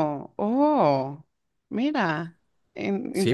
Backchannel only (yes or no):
no